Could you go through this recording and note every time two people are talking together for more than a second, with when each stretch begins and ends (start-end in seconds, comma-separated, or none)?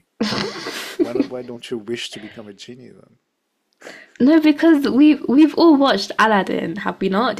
none